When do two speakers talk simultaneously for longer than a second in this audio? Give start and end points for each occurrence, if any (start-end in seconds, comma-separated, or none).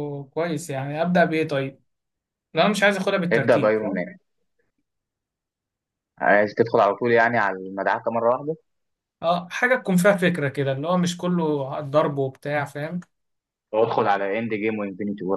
none